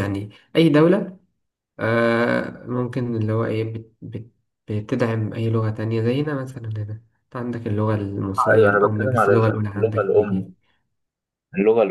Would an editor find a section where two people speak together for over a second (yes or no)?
yes